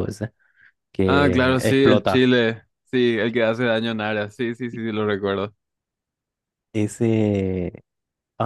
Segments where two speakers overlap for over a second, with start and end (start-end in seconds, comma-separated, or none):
1.0-2.3